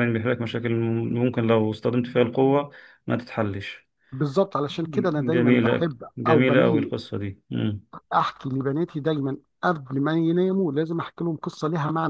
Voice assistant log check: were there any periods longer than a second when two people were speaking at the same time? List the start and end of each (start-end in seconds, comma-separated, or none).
5.3-6.9